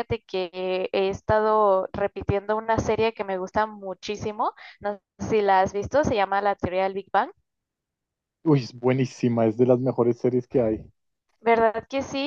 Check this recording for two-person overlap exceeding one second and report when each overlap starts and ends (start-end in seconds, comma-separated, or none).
none